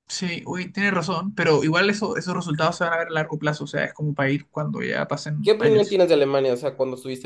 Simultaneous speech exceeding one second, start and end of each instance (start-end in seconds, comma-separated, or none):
none